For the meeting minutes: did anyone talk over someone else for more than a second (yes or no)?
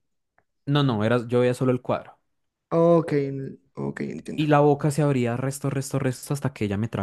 no